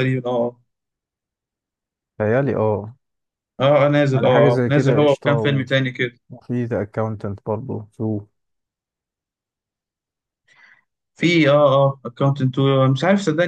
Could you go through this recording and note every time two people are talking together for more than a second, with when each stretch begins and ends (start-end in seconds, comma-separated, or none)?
4.1-5.7